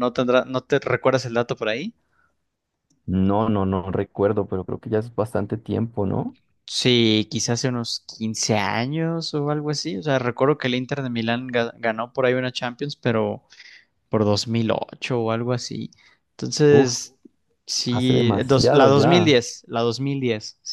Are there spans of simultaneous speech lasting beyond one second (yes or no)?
yes